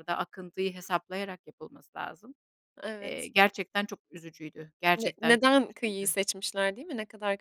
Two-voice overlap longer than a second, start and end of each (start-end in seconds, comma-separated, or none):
4.9-6.2